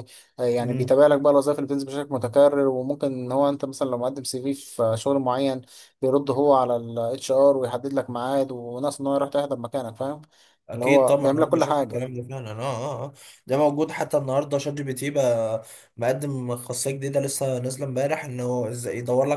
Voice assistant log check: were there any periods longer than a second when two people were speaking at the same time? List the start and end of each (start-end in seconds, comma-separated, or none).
10.7-12.0